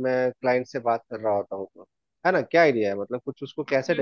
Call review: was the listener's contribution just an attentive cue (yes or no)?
no